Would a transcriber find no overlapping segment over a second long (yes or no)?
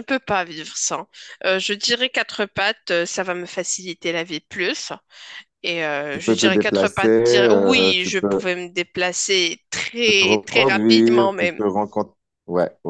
no